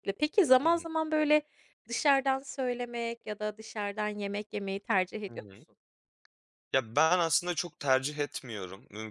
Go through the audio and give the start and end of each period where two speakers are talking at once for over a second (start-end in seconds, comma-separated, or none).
none